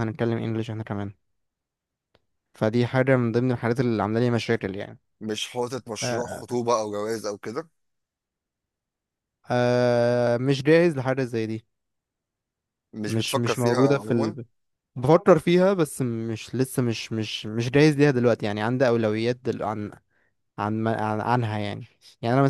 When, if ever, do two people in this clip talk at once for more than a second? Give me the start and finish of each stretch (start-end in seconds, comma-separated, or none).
13.1-14.4